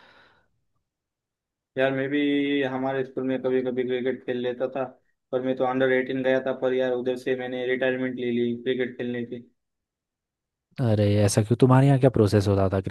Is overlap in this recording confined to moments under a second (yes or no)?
yes